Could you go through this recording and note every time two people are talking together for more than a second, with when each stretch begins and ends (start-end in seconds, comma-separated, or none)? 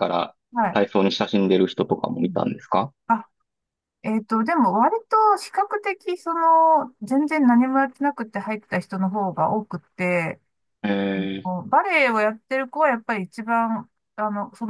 none